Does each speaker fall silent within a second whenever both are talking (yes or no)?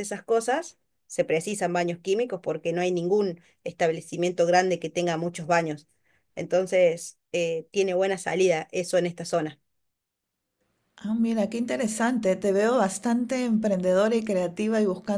yes